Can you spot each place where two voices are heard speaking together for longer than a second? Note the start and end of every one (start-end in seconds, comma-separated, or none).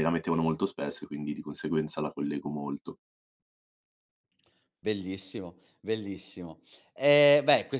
none